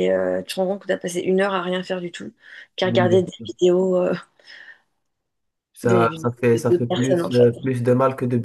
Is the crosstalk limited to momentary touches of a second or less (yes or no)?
no